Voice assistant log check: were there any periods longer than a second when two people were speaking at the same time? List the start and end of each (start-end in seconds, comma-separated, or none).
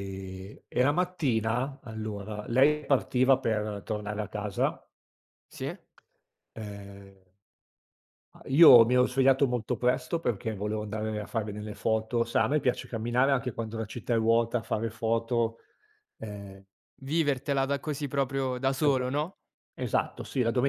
none